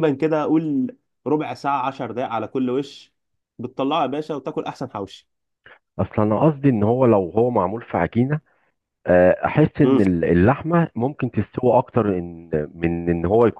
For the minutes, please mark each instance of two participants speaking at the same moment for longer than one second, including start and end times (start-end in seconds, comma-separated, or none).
none